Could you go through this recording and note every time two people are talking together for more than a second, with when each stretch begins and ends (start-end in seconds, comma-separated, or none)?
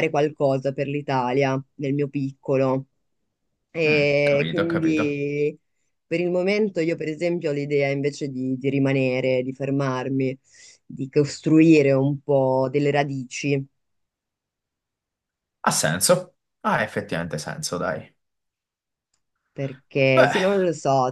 3.8-5.2